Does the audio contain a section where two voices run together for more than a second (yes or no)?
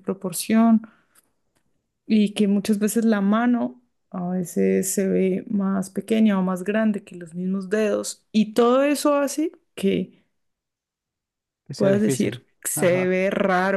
yes